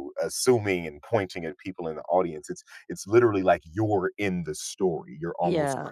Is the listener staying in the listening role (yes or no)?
yes